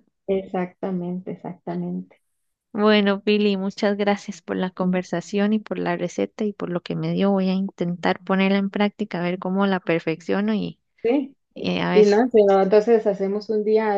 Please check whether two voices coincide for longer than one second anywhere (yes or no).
no